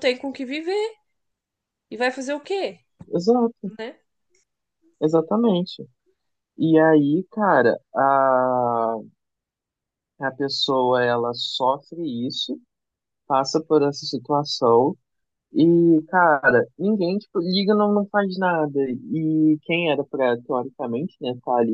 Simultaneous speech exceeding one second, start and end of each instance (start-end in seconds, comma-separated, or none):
none